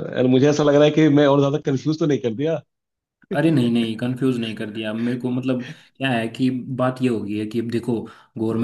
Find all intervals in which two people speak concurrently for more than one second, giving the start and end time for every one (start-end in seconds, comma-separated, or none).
none